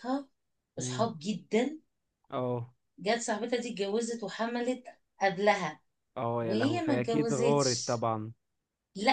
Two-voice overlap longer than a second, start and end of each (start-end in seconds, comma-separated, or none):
6.4-8.0